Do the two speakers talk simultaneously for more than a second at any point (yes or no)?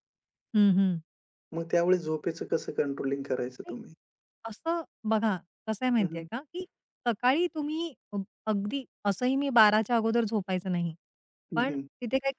no